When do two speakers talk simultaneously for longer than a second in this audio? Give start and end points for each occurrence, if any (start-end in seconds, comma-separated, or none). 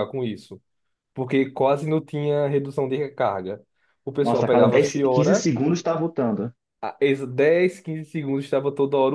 4.2-5.5